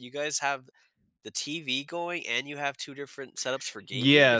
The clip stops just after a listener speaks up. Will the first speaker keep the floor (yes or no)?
no